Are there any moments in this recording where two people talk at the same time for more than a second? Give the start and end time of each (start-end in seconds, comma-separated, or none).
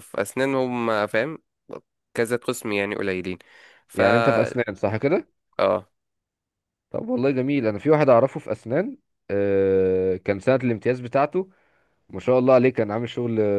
none